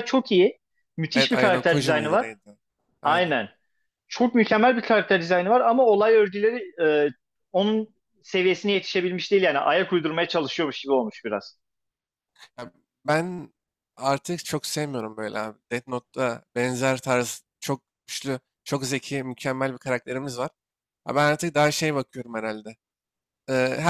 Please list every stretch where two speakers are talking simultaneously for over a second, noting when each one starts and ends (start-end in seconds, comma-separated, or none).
1.1-2.3